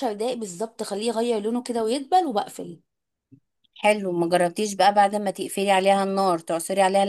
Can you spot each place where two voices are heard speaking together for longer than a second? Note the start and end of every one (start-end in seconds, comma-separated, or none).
none